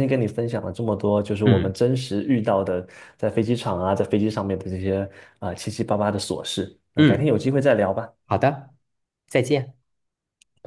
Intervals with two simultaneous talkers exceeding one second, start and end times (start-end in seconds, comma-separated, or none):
none